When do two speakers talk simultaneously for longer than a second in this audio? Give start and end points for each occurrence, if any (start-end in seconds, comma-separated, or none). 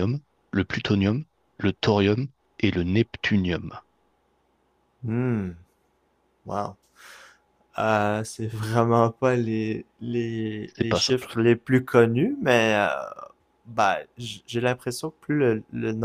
none